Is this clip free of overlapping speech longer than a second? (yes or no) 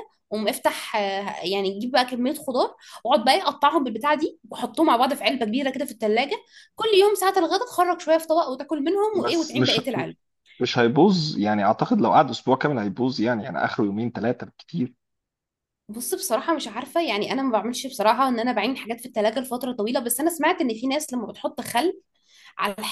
yes